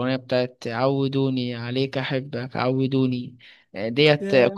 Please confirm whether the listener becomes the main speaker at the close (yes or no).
no